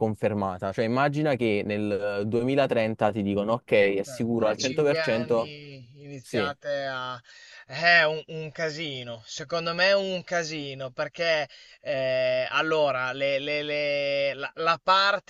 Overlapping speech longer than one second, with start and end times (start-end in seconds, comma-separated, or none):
4.1-5.5